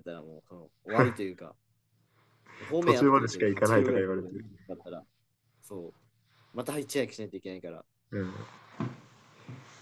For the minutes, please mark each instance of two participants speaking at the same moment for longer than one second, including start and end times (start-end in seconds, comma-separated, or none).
2.8-4.3